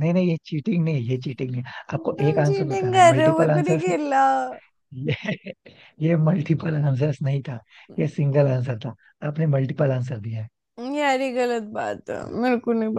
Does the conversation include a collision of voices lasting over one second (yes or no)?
yes